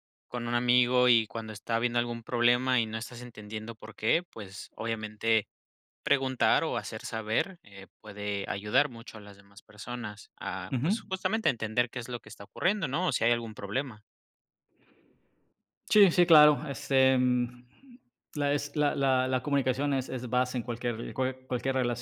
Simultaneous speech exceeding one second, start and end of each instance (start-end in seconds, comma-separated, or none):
none